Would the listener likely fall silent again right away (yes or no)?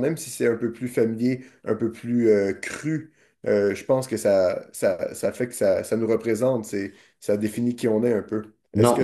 no